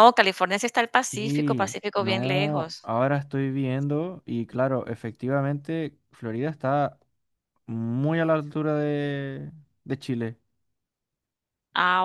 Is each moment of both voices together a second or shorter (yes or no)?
no